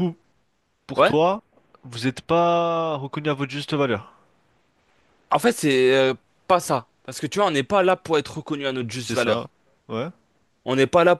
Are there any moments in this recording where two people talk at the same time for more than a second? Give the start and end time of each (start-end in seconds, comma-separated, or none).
none